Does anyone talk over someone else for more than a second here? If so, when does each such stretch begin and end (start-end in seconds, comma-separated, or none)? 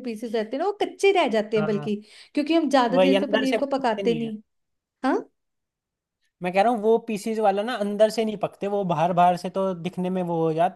2.9-4.3